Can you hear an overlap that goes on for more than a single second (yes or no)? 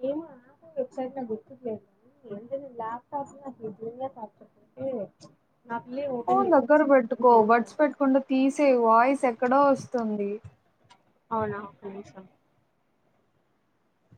no